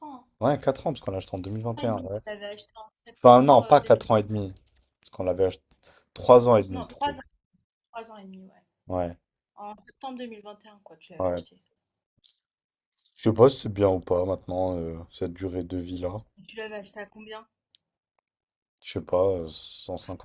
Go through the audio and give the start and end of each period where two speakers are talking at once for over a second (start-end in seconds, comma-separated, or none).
3.2-4.4